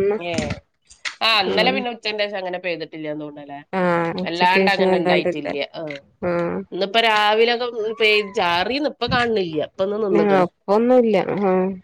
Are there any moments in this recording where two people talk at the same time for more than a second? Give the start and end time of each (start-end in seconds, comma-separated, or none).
4.2-5.5